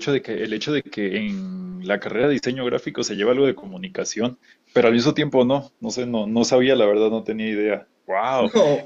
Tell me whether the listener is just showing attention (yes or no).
no